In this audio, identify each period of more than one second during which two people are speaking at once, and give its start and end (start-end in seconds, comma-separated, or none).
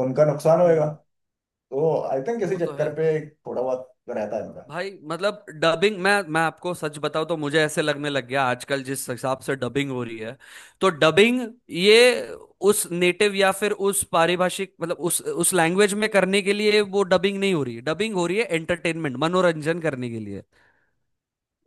none